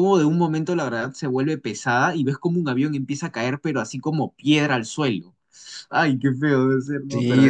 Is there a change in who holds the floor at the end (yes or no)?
yes